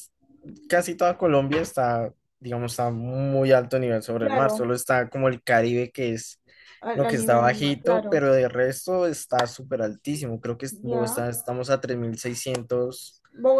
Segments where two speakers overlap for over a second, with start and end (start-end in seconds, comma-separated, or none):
6.9-8.2